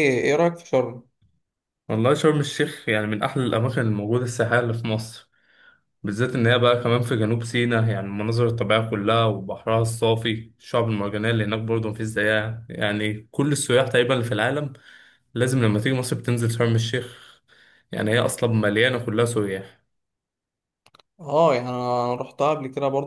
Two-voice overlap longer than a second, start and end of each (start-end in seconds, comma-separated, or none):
none